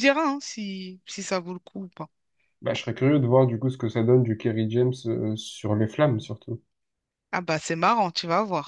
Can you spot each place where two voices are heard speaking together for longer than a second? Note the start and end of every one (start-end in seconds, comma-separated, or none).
none